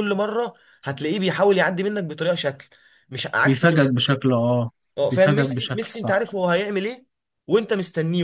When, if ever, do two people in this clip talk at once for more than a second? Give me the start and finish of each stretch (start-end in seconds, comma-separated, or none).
5.0-6.2